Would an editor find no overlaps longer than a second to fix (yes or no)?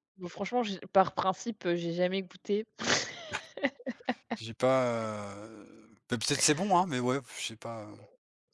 yes